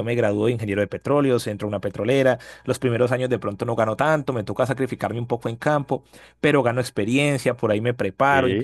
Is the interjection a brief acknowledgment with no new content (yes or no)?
yes